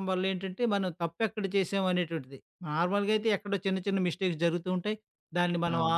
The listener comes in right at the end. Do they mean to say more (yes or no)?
no